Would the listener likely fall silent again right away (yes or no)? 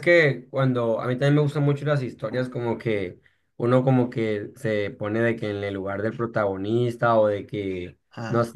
yes